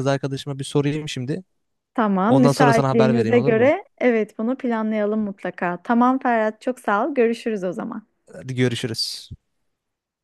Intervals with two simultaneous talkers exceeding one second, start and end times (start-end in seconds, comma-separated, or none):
2.3-3.7